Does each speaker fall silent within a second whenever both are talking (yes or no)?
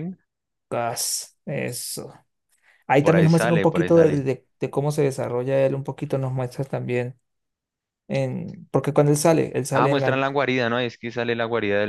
no